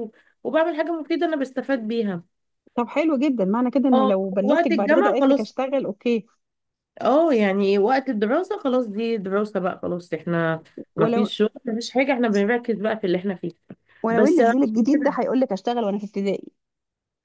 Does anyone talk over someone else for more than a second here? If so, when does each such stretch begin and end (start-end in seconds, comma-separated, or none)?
3.9-5.5